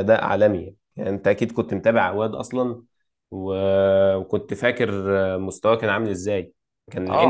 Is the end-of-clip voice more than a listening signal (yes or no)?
yes